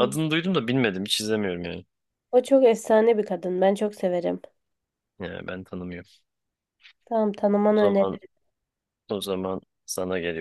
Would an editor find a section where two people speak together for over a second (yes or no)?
no